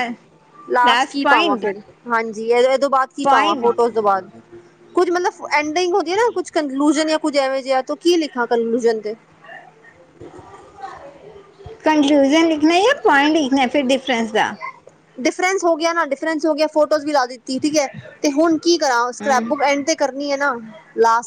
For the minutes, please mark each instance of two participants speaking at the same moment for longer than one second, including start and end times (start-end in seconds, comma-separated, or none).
none